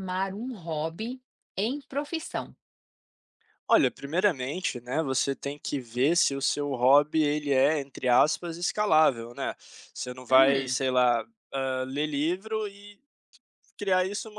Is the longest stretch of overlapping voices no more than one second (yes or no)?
yes